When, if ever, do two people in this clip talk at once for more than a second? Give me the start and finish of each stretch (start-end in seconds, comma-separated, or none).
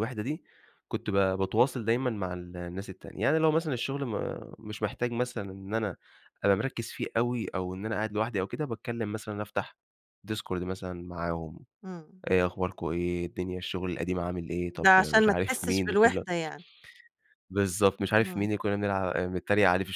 14.8-16.2